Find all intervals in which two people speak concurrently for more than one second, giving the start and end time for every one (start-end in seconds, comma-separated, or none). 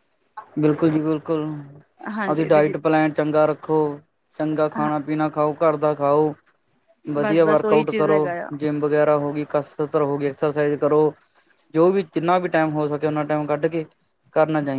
7.2-8.5